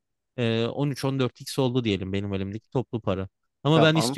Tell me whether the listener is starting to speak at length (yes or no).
no